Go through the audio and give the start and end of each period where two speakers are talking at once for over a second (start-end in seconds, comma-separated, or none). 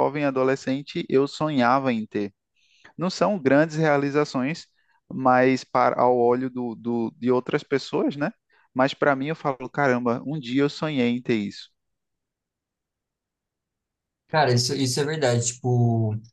none